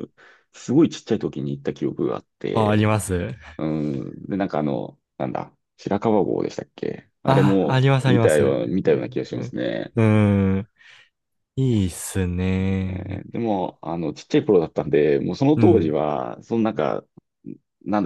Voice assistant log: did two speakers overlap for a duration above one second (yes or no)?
yes